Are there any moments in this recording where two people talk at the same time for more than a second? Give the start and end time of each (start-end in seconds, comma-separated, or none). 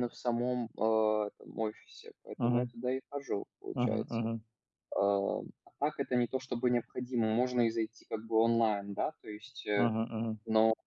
none